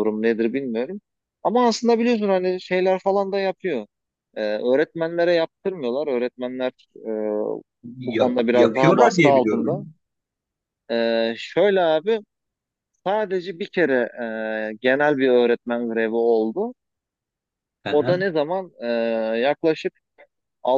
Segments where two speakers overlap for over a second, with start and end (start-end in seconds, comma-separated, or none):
8.1-9.8